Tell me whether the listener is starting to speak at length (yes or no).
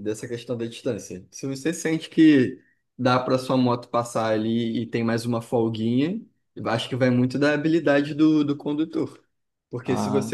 no